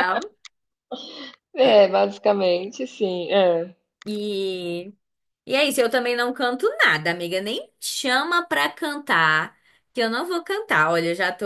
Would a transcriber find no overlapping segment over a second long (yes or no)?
yes